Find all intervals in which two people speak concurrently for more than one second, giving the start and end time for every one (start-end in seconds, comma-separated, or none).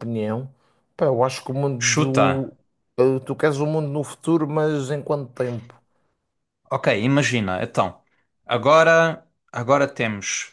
none